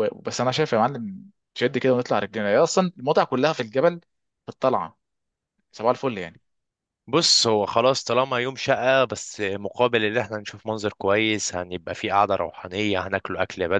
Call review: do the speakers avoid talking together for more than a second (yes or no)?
yes